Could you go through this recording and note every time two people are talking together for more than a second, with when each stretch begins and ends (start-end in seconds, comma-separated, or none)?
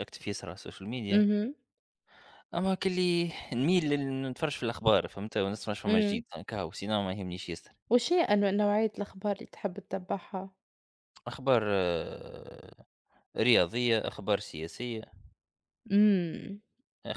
none